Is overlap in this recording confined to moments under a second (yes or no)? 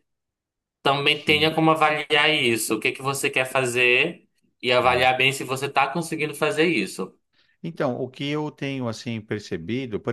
yes